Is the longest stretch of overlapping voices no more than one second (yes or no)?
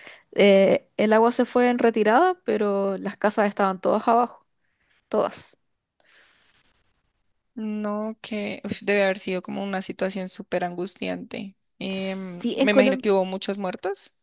no